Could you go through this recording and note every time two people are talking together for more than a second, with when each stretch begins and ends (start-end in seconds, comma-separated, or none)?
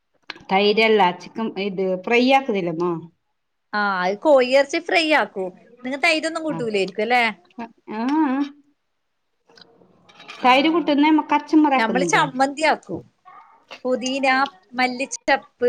none